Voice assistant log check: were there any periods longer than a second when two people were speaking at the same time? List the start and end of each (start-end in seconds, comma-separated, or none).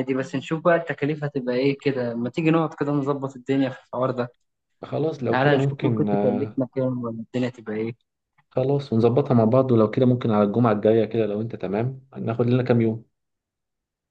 5.3-6.6